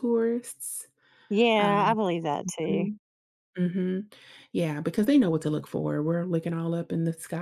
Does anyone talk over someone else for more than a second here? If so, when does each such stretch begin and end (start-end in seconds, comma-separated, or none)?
none